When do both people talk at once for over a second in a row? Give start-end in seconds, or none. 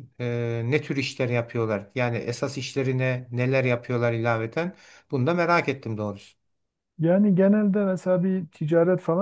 none